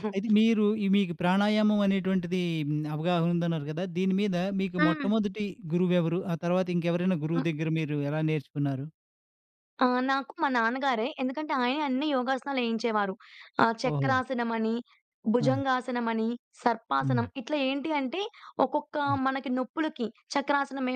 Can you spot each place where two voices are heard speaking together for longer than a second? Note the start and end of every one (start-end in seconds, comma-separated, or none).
none